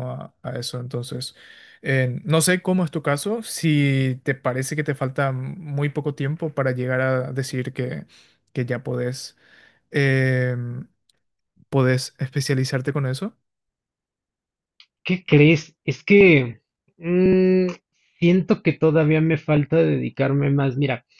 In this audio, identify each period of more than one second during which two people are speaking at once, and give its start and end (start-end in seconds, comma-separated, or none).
none